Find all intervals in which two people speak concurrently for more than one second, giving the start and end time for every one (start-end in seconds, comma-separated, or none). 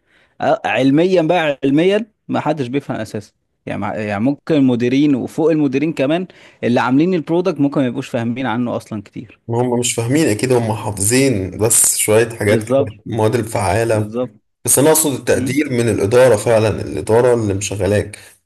none